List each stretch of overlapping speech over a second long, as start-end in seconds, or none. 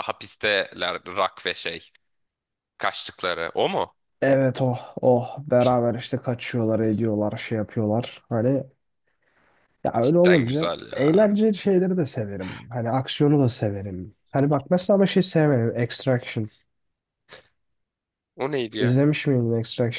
10.0-11.4